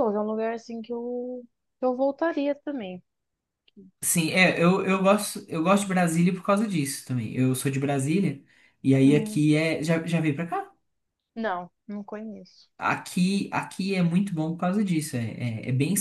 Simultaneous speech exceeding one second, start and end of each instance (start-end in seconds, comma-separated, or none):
none